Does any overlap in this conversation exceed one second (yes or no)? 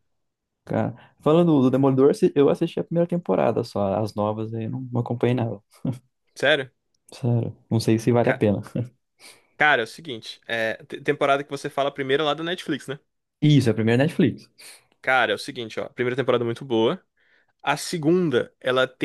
no